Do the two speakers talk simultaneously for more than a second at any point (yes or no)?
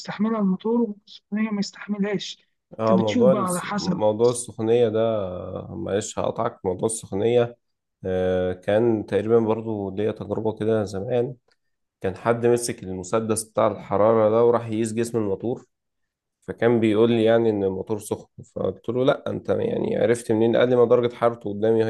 yes